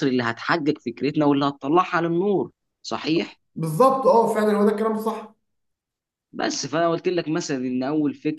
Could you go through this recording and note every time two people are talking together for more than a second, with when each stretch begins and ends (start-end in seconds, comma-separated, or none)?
none